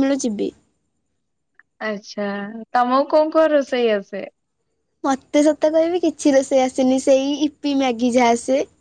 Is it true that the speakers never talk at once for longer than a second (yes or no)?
yes